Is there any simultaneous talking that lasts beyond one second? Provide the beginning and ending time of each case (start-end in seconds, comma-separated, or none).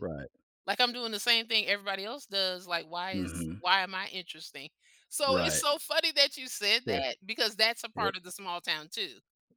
none